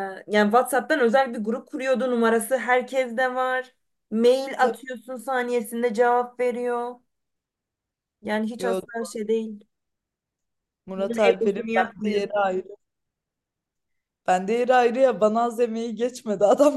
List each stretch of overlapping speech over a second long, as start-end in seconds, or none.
10.9-12.2